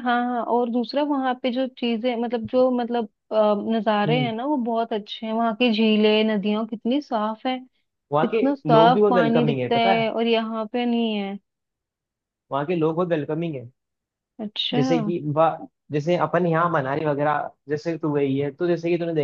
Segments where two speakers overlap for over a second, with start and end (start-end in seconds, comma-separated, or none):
8.2-10.1